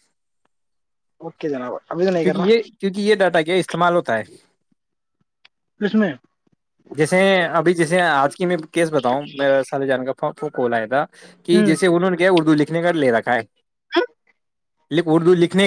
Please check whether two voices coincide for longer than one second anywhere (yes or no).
no